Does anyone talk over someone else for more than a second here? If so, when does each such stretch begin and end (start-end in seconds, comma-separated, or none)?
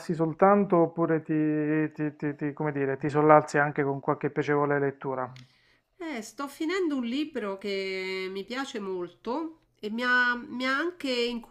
none